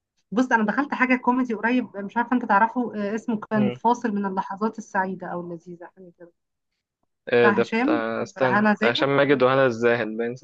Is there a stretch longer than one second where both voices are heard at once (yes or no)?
yes